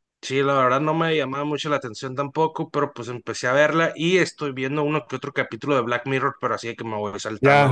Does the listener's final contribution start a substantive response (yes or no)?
yes